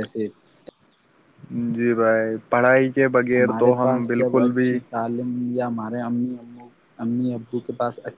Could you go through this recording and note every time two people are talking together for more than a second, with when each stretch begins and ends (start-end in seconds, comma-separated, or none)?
3.4-4.7